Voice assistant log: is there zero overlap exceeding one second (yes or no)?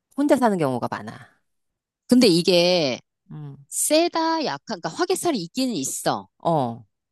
yes